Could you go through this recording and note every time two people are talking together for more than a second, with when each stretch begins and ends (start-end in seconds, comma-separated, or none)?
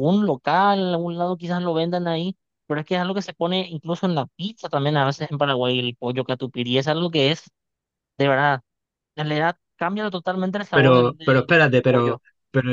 10.7-12.2